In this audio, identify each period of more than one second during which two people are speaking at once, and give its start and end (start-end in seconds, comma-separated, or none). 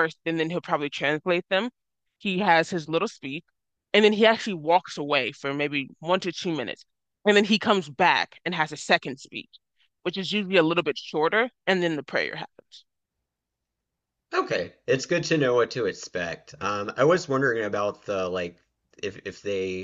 none